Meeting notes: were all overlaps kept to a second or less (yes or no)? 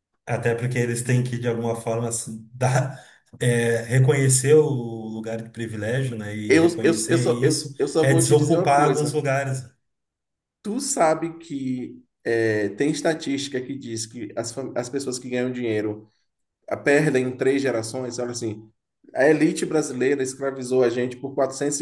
no